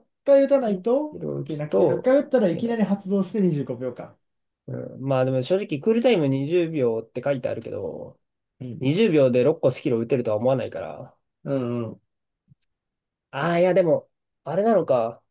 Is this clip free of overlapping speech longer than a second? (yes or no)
no